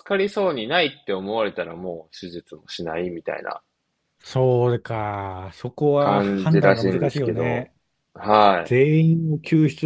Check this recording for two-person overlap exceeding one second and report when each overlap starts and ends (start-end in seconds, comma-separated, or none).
6.0-7.7